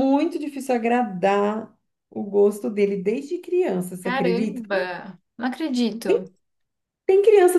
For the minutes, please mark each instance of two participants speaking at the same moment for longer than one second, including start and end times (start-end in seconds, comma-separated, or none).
none